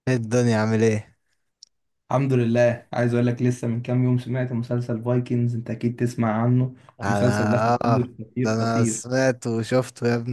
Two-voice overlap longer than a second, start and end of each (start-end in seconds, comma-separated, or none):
7.0-9.0